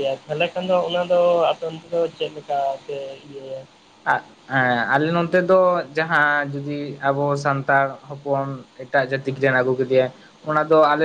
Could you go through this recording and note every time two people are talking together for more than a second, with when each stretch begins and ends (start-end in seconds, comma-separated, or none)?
none